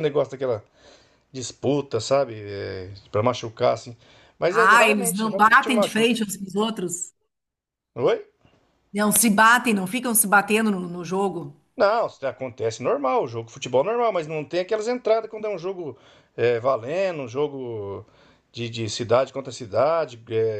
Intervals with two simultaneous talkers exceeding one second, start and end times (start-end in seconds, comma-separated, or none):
4.5-6.1